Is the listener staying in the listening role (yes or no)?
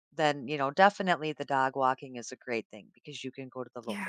yes